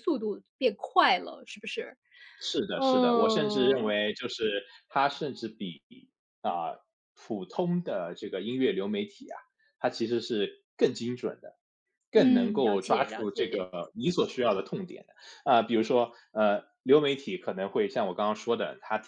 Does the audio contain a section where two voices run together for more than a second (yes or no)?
yes